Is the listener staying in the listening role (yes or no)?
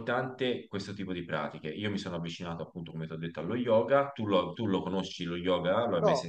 no